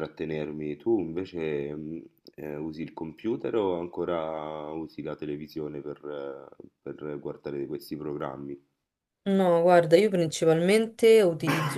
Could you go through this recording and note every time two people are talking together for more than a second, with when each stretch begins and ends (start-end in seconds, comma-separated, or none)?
none